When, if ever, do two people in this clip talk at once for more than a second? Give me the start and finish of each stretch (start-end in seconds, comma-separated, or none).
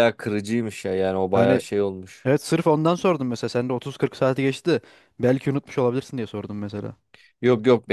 none